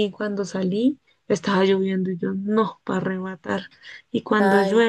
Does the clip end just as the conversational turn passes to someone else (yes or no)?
no